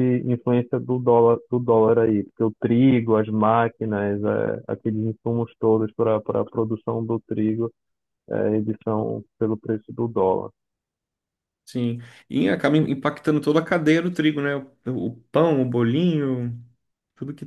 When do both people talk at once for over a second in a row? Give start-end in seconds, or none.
none